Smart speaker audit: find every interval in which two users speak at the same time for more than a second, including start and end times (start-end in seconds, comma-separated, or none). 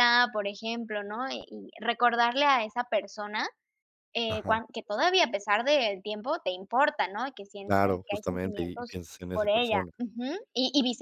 7.7-9.9